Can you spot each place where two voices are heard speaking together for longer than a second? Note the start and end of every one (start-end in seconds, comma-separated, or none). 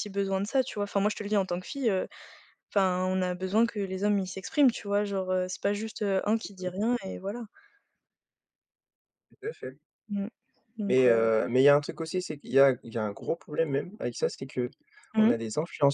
none